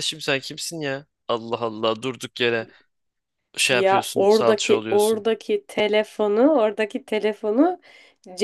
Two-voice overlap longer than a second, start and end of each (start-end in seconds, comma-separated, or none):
3.7-5.2